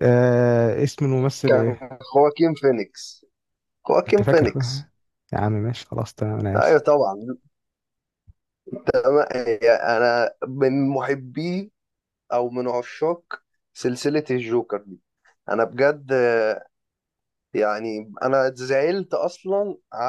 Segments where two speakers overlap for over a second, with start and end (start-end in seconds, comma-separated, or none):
none